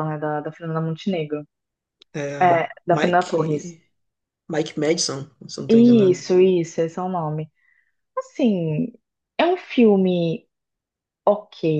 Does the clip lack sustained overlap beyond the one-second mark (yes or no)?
no